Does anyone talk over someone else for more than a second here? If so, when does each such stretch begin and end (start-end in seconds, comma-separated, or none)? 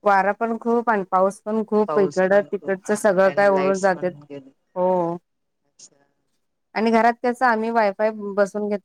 1.9-4.1